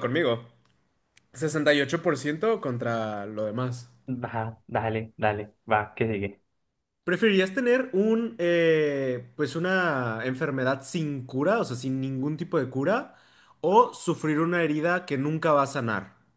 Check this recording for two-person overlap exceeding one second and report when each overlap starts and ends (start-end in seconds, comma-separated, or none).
none